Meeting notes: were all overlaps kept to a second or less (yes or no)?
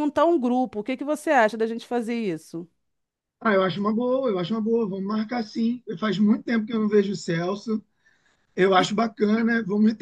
yes